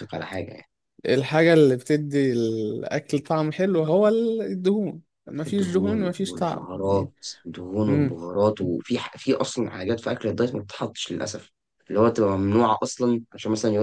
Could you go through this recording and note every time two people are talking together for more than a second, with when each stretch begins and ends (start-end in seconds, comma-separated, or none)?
5.5-7.1